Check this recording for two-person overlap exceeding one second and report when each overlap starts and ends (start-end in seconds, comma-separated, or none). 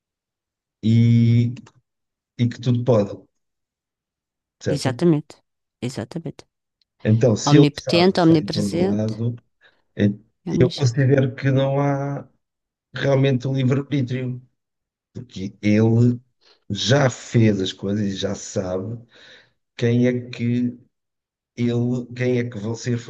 7.5-9.1